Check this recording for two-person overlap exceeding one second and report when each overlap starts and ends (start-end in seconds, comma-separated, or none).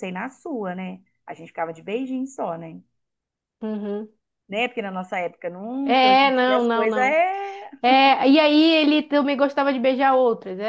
5.8-7.2